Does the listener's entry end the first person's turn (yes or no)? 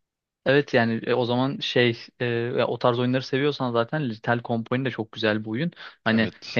no